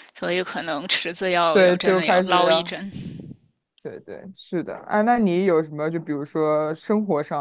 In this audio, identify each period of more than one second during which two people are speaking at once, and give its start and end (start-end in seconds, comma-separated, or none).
1.5-2.8